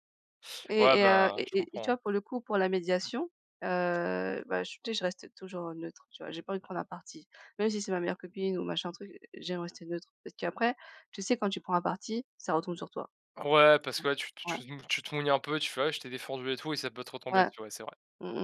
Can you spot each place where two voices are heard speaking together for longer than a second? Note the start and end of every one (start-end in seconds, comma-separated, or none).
0.8-2.0